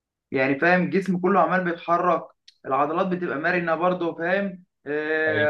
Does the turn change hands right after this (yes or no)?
no